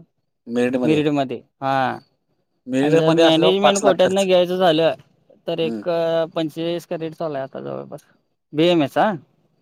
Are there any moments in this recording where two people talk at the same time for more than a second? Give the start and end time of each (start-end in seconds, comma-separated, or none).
2.8-4.2